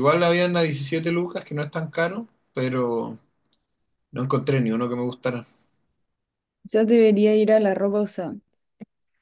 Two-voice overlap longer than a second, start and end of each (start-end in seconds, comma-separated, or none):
none